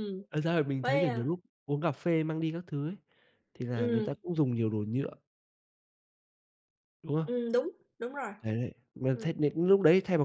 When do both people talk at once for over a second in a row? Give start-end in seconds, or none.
none